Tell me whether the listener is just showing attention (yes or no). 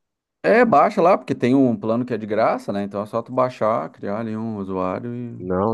no